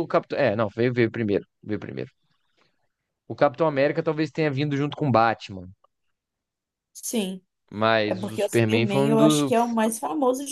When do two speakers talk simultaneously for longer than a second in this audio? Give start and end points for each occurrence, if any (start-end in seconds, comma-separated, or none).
8.1-9.5